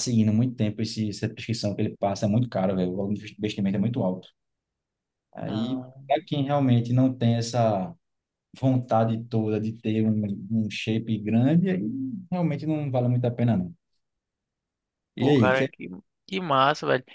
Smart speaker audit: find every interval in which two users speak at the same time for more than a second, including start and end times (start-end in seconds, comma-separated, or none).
none